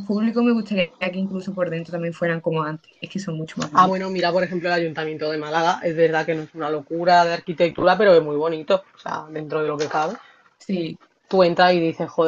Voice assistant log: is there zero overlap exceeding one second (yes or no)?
yes